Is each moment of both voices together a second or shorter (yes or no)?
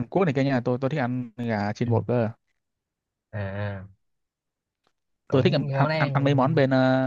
no